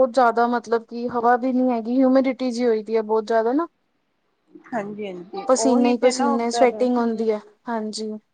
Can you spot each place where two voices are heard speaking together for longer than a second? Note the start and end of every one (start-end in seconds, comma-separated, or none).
5.5-6.8